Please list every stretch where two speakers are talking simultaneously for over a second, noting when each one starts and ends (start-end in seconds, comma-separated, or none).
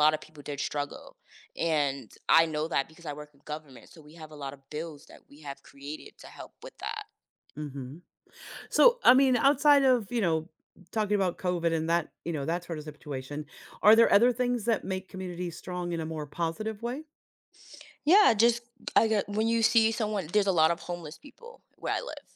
none